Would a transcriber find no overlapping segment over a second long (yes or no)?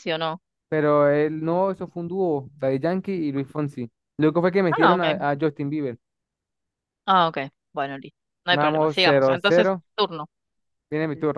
no